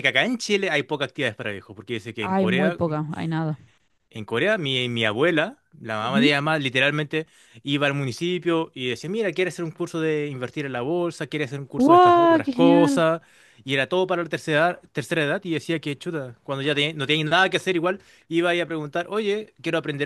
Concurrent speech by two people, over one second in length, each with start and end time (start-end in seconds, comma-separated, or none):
11.8-13.0